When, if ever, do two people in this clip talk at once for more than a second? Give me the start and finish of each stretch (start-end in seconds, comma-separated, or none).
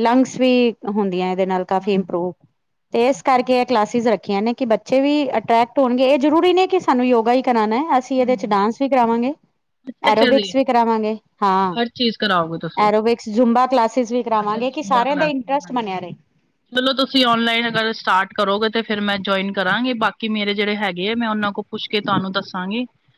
none